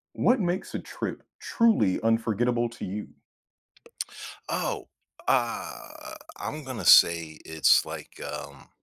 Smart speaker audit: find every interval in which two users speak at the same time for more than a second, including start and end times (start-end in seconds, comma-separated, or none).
none